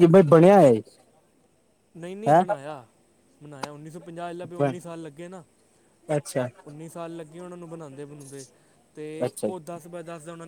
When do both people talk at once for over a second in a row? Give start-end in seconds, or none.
none